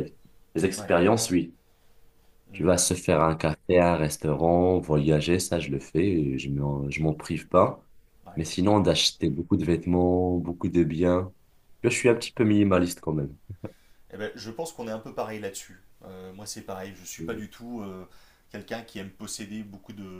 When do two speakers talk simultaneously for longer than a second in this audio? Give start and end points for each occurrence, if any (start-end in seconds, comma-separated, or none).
none